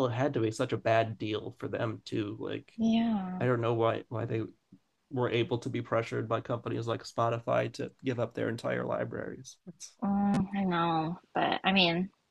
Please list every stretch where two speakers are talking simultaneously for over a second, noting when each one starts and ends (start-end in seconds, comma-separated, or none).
none